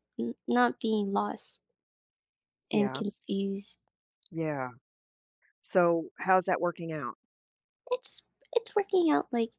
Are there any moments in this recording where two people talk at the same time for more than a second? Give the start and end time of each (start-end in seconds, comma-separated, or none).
none